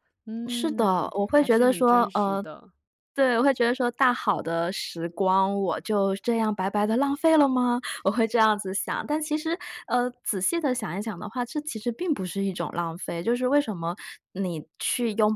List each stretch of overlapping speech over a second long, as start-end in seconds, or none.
0.5-2.4